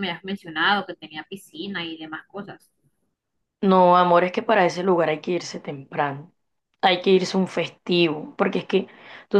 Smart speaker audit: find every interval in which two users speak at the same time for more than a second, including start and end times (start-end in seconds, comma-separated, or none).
none